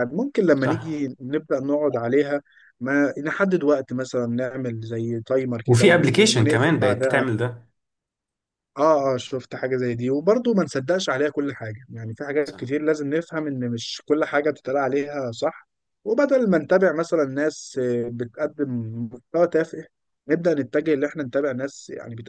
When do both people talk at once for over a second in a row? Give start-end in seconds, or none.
5.7-7.2